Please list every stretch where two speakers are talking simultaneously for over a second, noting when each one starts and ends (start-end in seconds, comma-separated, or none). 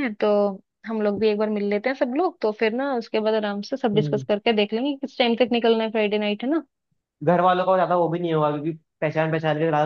none